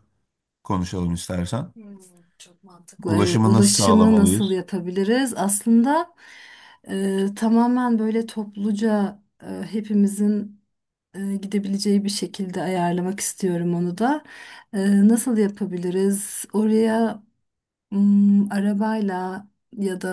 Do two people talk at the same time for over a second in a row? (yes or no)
yes